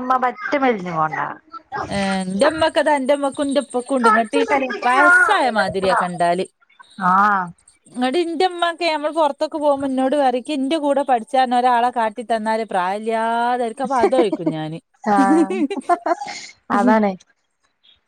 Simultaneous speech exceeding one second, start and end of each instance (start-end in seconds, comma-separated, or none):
none